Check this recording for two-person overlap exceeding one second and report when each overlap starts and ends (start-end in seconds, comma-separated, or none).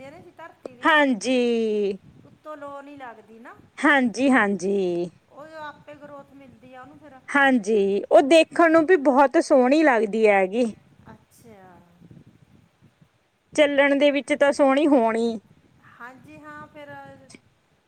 none